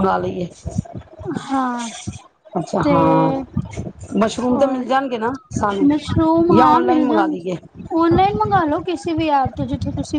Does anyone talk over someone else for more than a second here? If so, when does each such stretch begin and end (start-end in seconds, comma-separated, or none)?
none